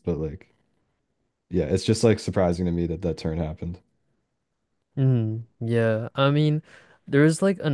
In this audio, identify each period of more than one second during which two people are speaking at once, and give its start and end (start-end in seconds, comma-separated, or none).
none